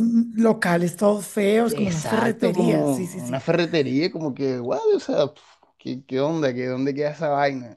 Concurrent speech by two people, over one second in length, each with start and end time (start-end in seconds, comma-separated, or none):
1.7-3.4